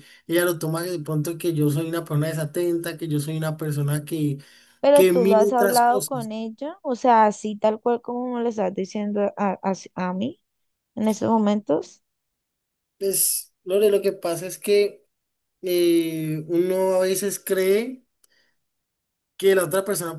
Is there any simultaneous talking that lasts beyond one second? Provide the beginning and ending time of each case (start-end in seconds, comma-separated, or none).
4.9-6.3